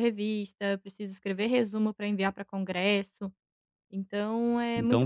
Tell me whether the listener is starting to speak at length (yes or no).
yes